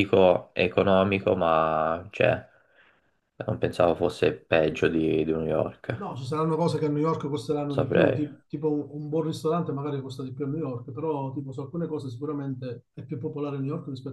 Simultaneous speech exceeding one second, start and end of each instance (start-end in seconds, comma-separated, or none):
none